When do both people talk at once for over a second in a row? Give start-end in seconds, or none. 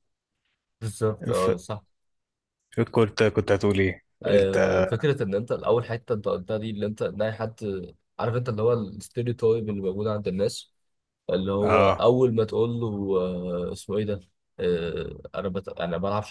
none